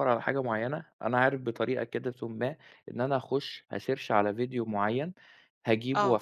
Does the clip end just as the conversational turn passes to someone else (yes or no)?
no